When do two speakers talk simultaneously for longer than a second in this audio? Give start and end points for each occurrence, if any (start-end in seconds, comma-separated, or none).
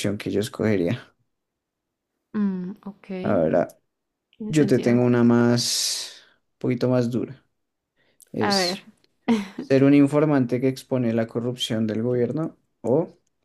none